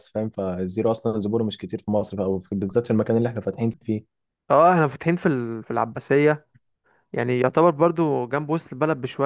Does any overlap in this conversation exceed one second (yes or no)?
no